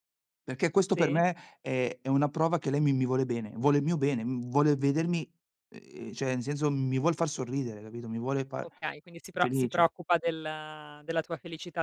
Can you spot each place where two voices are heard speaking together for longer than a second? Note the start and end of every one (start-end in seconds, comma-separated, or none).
none